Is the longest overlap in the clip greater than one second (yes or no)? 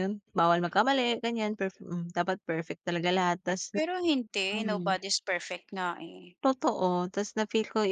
no